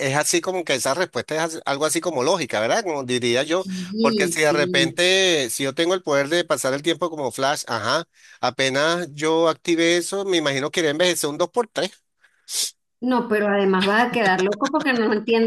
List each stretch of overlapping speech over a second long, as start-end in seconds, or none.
3.6-5.0